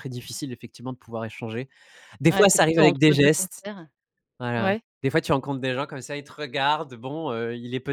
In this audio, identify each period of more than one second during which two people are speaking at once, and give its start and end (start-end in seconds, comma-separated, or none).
2.3-3.6